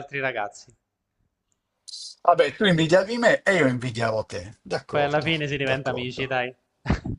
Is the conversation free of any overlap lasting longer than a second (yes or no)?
no